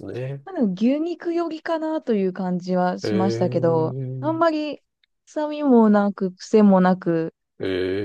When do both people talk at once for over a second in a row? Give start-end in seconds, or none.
3.0-4.4